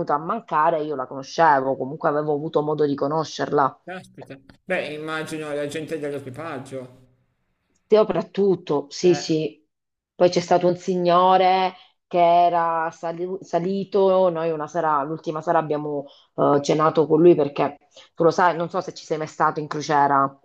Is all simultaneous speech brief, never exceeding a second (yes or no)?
yes